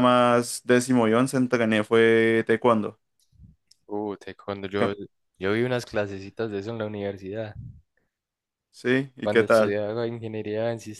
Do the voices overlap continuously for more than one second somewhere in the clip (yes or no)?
no